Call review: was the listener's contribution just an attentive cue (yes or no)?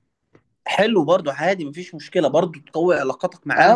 no